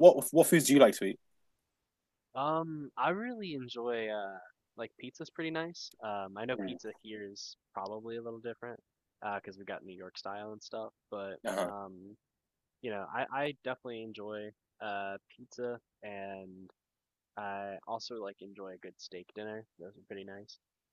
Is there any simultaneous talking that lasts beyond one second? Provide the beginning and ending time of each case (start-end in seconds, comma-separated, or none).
none